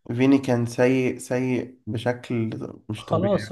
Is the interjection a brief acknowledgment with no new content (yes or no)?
no